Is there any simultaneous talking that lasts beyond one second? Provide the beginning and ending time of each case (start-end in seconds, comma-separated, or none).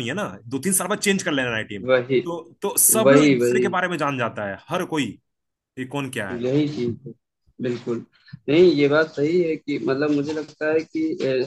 none